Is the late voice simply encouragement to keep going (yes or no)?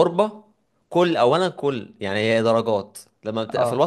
yes